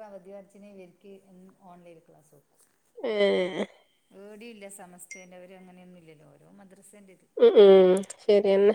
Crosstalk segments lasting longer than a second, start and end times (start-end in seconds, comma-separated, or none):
none